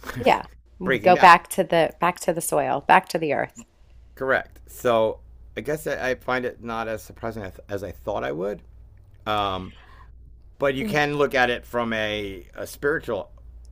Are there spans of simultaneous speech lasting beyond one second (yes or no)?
no